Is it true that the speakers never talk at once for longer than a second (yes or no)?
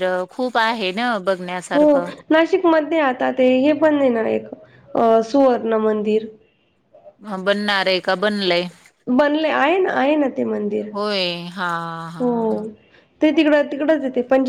yes